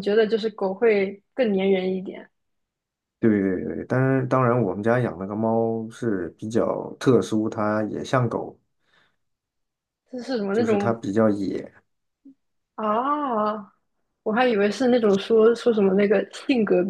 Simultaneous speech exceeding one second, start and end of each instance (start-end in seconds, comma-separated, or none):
none